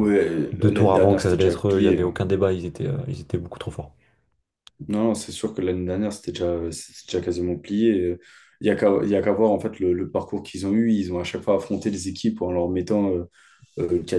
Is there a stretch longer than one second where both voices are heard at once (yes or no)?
yes